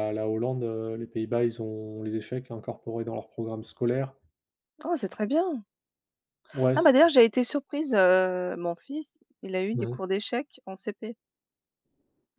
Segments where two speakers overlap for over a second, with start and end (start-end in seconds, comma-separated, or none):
none